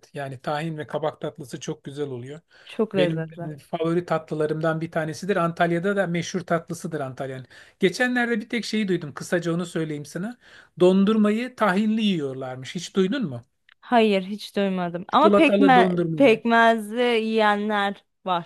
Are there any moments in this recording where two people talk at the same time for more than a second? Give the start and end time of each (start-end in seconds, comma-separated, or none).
15.1-16.4